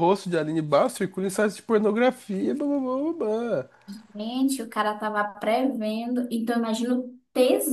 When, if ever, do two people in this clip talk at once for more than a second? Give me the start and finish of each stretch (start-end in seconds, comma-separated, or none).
none